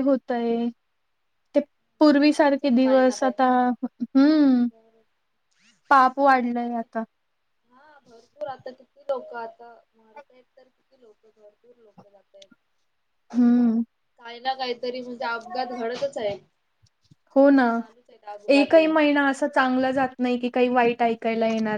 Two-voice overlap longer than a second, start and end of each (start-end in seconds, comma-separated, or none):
2.2-3.5